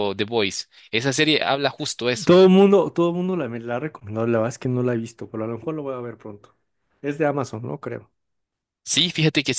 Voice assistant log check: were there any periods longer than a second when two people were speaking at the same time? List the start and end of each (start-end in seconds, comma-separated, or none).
none